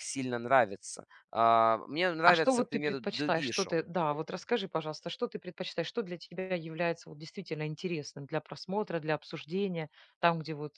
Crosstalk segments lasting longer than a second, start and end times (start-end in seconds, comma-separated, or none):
2.2-3.8